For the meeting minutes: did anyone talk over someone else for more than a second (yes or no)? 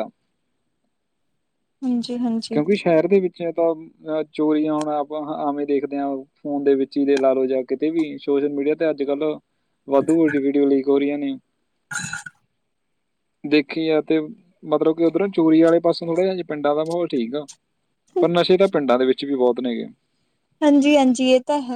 no